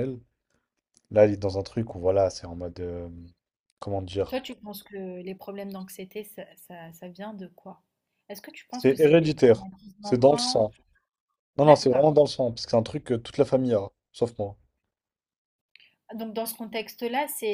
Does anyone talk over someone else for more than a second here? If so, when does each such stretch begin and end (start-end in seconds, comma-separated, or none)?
8.7-10.7